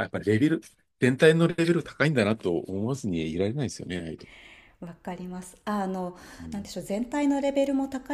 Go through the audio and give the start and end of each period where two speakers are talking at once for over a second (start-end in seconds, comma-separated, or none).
none